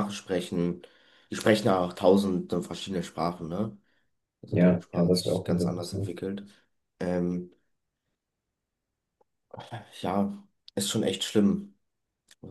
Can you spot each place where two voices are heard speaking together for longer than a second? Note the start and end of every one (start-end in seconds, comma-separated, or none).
4.5-6.2